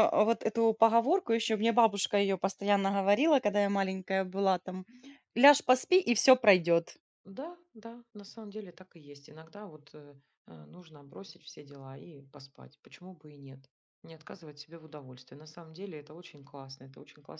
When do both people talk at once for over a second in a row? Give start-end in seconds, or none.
none